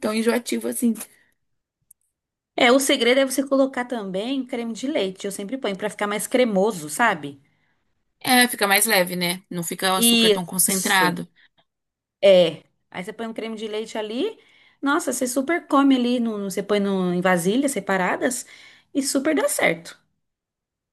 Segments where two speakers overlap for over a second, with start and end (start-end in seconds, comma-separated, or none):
none